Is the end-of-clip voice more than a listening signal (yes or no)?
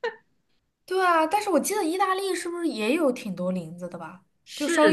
yes